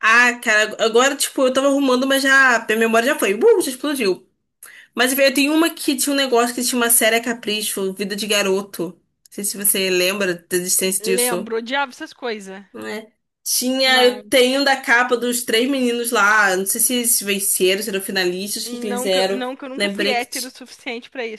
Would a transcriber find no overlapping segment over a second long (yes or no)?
no